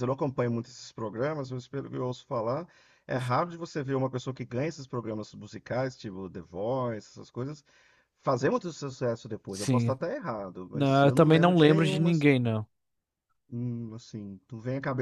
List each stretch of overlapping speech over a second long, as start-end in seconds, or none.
10.7-12.1